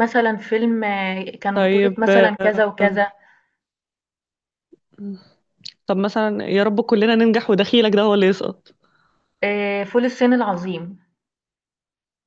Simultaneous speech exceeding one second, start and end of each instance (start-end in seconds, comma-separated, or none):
1.5-3.0